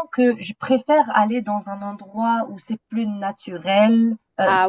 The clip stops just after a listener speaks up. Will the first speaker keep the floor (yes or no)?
yes